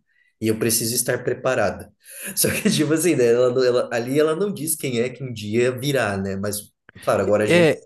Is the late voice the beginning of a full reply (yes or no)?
yes